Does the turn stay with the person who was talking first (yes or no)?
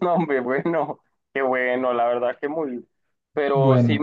yes